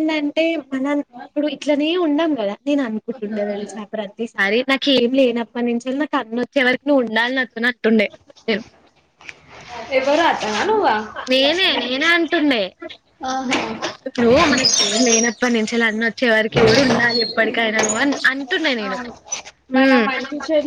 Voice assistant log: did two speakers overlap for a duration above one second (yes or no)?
no